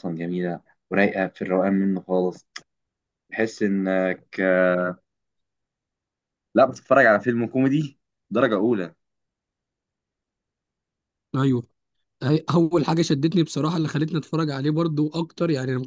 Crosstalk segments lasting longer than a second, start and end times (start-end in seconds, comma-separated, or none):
none